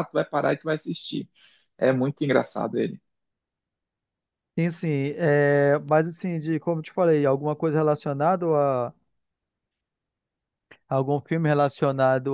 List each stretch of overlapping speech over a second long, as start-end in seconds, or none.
none